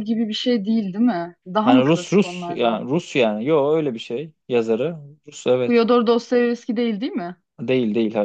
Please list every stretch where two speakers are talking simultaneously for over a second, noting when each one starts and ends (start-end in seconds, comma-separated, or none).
1.6-2.8